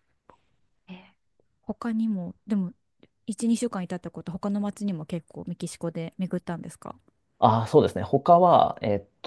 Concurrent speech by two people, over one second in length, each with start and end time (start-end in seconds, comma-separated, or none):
none